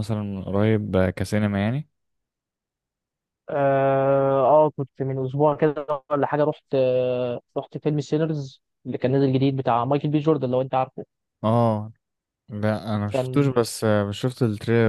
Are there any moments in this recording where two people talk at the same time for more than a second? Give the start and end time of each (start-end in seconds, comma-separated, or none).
none